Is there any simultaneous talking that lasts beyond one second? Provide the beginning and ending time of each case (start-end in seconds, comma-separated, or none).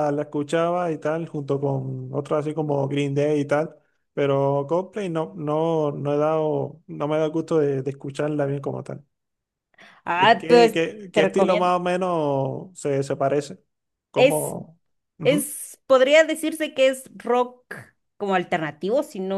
10.2-11.7